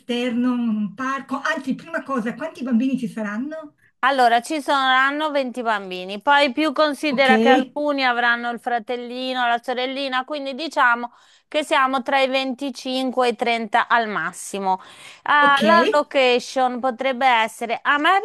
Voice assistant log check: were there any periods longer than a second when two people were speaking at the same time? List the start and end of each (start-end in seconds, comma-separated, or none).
none